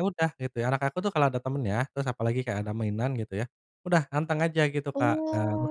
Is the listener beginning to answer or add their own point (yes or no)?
yes